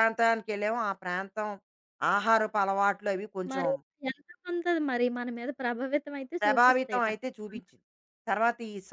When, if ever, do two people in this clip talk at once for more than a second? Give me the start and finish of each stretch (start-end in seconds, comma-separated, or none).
6.4-7.7